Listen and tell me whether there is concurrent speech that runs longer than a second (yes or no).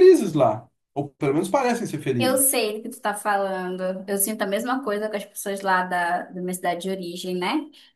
no